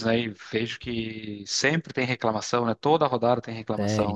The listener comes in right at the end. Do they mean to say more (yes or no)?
yes